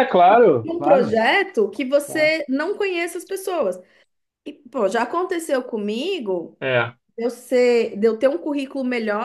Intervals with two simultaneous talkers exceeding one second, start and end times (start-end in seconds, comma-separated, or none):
none